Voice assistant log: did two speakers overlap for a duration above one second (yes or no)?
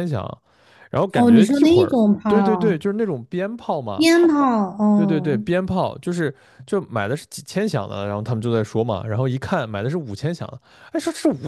yes